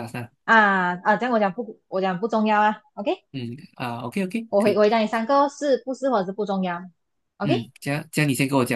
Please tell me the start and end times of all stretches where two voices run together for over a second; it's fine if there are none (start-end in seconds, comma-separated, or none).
none